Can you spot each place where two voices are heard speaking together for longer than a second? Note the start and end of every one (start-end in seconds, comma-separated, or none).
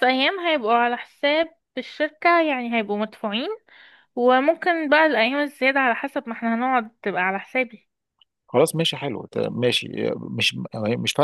none